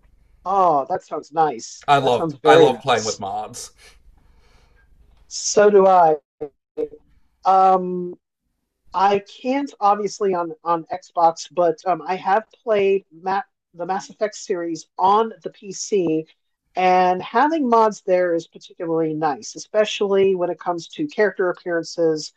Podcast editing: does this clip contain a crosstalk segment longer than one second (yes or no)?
yes